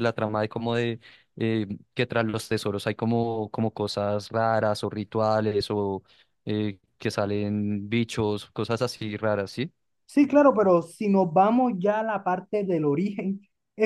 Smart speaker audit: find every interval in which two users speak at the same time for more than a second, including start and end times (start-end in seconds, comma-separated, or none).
none